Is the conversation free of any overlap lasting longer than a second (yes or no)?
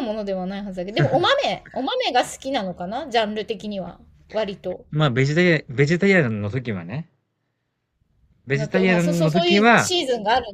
no